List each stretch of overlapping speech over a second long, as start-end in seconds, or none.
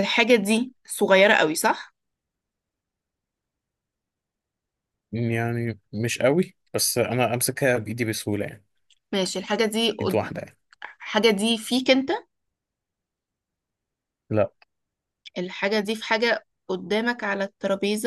none